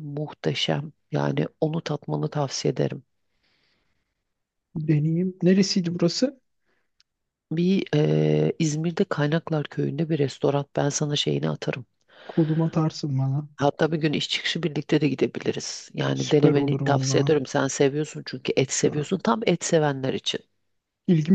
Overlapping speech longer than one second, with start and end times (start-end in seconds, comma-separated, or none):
16.1-17.3